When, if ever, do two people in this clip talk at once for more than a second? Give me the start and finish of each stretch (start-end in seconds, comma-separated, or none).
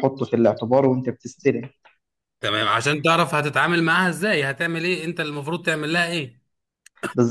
none